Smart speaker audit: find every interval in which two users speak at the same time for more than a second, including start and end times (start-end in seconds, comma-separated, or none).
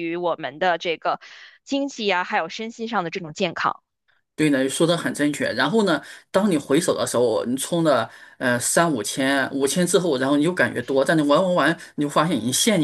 none